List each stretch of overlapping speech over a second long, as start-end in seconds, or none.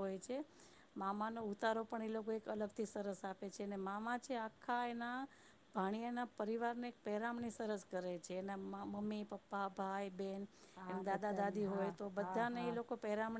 10.9-12.8